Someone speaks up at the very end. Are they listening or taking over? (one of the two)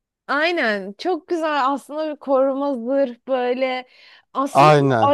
listening